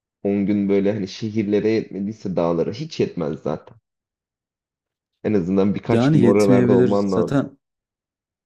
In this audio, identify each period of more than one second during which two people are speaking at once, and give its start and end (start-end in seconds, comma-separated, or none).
5.9-7.5